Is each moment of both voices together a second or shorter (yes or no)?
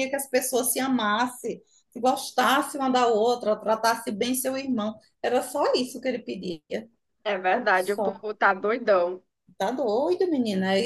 yes